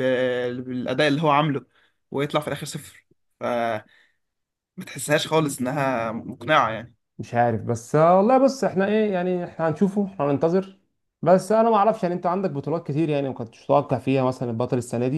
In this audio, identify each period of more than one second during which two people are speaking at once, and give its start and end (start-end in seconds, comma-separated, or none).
none